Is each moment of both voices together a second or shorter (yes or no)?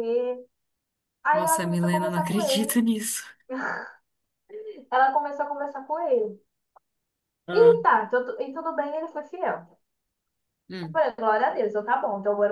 no